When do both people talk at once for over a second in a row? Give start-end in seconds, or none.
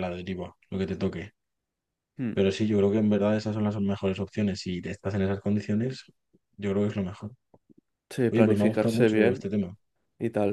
8.3-9.5